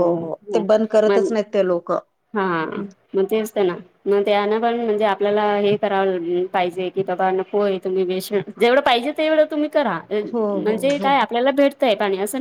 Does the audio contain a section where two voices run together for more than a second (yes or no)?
no